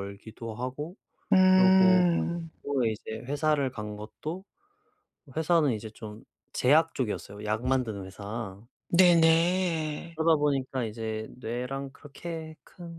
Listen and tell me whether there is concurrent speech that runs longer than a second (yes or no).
no